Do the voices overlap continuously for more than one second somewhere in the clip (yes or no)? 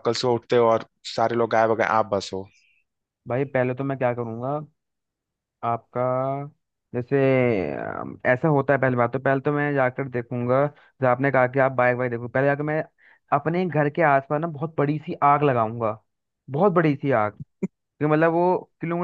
no